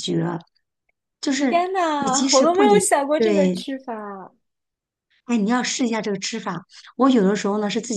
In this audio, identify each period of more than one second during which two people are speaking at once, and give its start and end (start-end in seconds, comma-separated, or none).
1.4-3.6